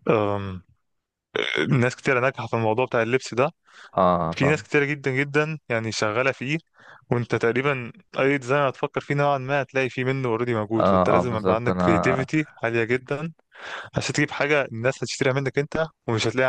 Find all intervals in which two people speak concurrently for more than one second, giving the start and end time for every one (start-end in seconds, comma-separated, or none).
10.8-12.3